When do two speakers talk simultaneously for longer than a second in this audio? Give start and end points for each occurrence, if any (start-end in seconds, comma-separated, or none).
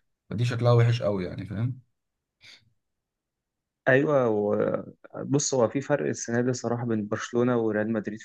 none